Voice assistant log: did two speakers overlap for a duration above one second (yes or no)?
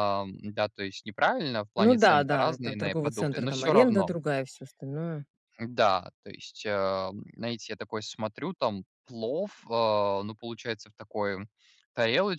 yes